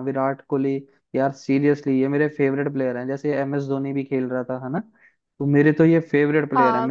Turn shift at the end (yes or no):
no